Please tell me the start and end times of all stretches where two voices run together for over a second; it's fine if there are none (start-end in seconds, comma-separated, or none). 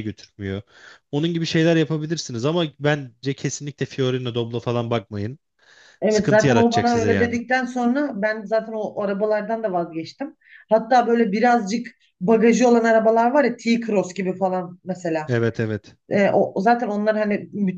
6.1-7.4